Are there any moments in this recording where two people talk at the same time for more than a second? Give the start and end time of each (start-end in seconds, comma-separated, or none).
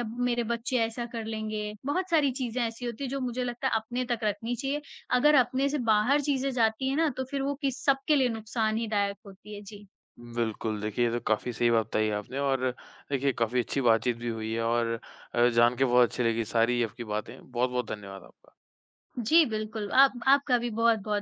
none